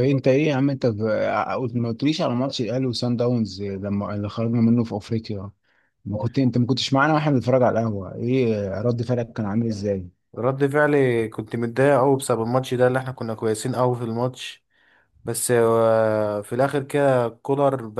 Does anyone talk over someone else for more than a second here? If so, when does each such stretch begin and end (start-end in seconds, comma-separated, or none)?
none